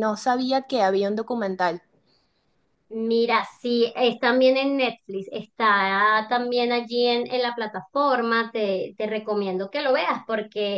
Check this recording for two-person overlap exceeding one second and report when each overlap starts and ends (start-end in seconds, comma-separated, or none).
none